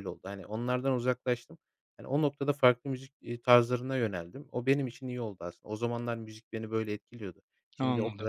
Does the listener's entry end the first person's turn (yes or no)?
no